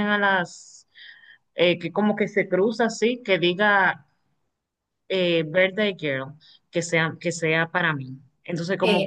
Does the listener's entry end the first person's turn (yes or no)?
yes